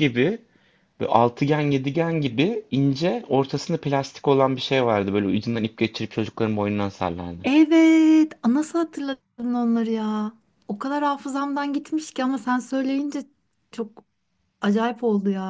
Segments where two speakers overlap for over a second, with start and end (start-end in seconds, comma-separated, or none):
none